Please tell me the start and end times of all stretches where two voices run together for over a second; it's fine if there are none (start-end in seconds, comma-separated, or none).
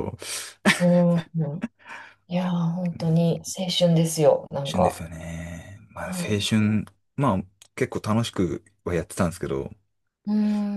none